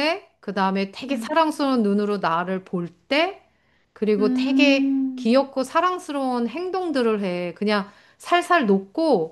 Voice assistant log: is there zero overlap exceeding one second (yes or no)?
no